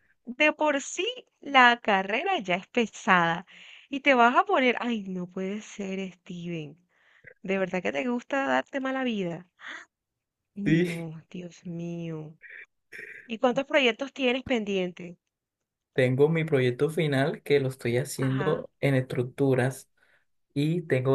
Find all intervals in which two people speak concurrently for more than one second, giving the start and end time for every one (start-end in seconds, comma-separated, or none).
none